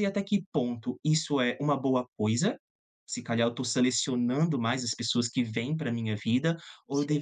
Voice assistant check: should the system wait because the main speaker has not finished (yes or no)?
yes